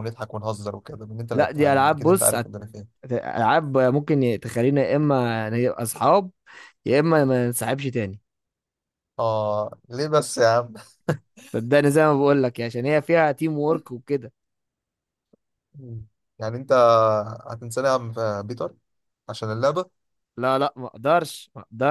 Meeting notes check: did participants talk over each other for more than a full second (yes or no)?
yes